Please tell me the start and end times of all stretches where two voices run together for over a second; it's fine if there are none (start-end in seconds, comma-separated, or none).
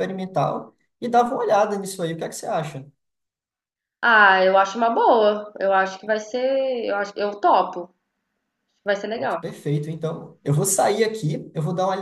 none